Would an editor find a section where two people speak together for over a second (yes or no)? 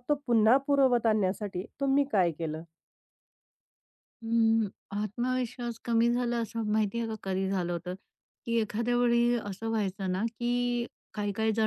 no